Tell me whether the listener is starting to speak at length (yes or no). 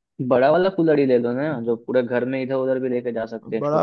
yes